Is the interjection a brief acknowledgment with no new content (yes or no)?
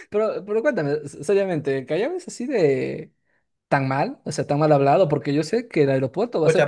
no